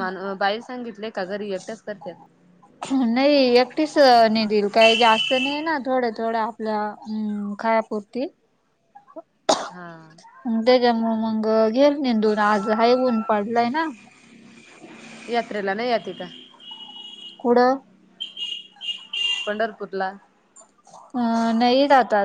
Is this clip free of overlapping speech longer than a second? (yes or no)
yes